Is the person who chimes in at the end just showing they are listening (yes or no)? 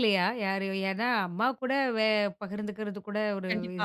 no